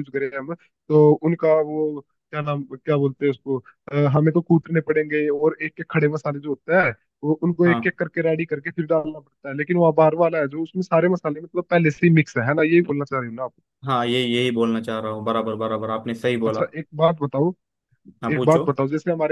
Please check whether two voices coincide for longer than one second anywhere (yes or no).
no